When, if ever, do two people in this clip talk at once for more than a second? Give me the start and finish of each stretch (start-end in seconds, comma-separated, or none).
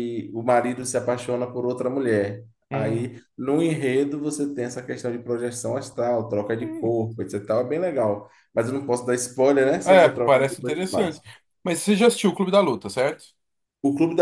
9.8-11.2